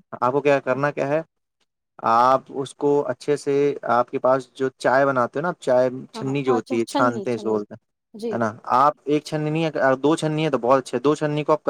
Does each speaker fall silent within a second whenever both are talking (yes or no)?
no